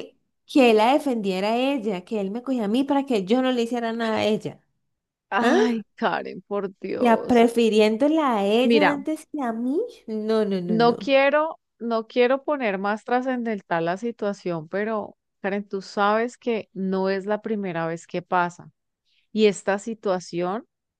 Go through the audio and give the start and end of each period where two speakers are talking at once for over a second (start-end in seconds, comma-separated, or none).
none